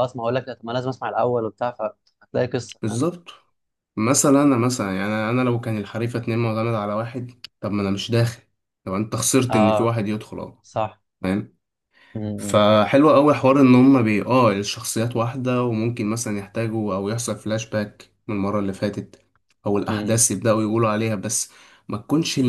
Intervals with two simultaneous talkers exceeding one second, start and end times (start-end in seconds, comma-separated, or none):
none